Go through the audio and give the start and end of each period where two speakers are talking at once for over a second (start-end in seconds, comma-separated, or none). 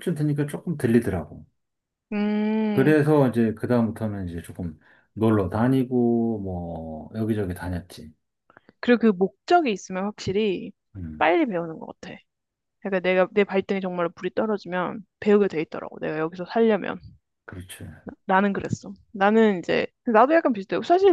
none